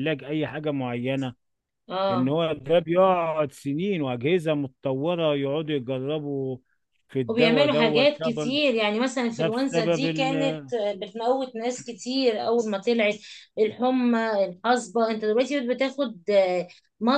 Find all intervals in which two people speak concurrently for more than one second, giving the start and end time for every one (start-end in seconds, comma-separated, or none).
7.3-8.6, 9.3-10.6